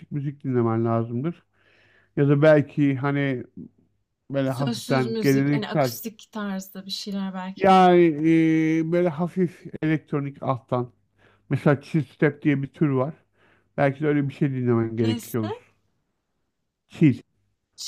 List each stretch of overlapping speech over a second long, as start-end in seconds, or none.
4.5-5.9